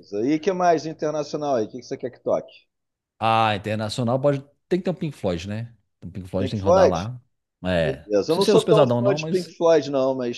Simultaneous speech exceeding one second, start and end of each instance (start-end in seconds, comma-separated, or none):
8.1-9.6